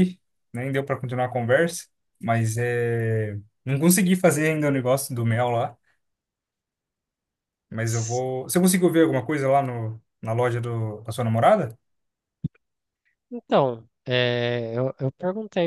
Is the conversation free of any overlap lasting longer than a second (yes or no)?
yes